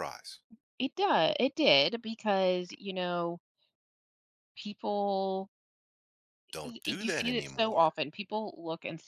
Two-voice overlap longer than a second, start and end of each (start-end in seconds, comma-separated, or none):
6.6-8.0